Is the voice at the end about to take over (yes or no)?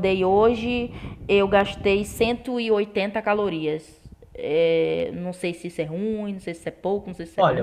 yes